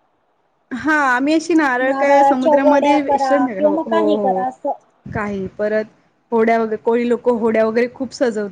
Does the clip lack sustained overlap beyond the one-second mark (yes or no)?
no